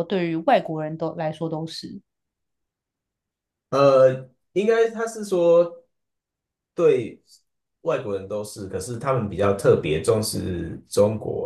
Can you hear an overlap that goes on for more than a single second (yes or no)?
no